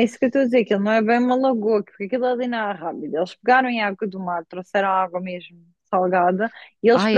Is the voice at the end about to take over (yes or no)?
no